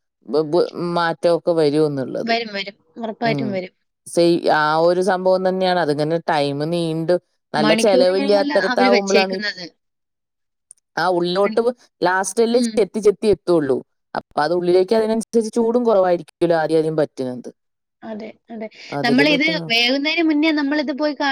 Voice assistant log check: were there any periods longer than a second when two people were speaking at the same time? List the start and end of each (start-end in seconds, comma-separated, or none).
7.6-9.4